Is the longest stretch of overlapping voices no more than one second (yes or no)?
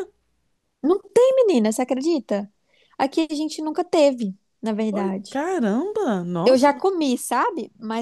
yes